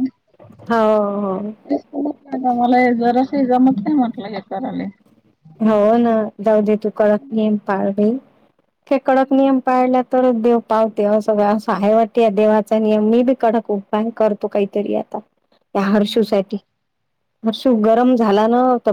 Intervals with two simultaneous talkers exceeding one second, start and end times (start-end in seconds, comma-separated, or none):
none